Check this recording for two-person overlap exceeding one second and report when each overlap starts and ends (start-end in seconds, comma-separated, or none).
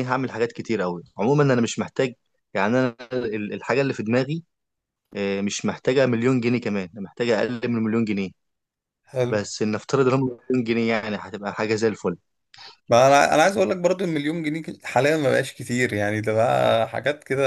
none